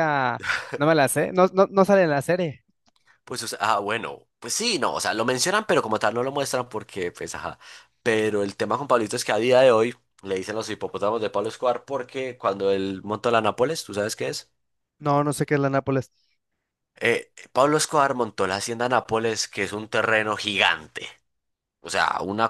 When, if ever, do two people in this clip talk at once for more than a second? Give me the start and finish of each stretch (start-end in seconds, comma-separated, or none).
none